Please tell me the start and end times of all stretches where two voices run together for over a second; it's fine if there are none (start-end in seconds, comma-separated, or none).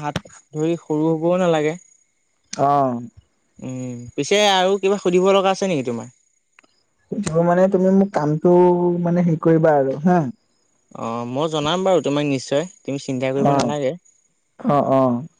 none